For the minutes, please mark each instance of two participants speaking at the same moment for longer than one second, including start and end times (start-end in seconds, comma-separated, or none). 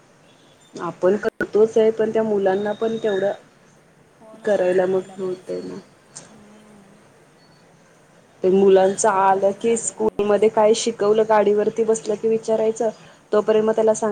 4.4-5.8, 9.0-10.5